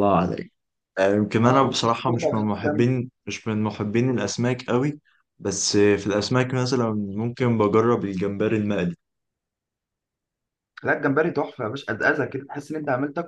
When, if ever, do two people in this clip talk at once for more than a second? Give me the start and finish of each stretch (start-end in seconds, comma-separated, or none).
1.4-2.9